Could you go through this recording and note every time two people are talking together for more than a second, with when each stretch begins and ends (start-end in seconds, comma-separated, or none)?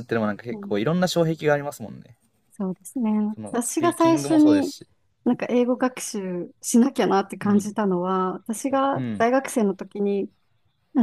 3.5-4.7